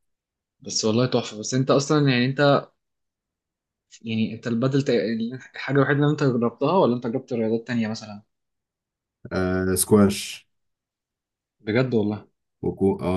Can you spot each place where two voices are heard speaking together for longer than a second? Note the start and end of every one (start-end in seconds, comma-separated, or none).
none